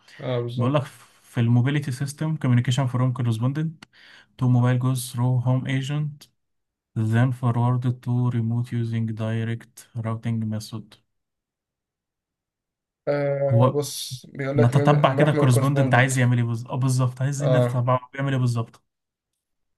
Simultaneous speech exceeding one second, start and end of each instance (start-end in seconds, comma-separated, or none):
14.6-16.1